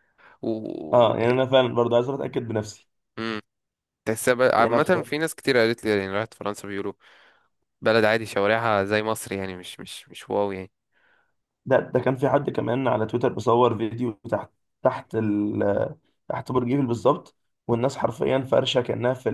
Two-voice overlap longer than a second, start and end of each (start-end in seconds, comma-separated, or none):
none